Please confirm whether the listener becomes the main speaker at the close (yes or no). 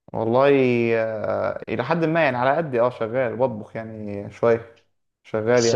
yes